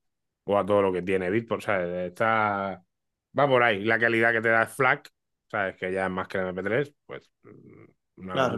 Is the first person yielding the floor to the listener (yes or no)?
yes